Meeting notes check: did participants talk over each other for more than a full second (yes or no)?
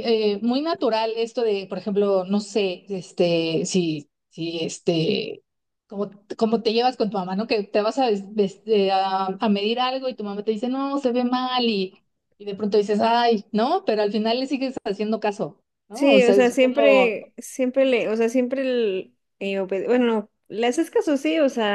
yes